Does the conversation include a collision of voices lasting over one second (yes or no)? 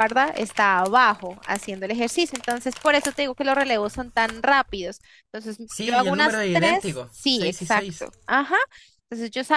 yes